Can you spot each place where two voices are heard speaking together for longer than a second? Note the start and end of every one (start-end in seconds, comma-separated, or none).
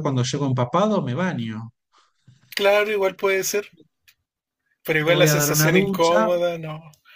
5.0-6.3